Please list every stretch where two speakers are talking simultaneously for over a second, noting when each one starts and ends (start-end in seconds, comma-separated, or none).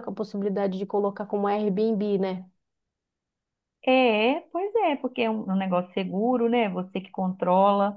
none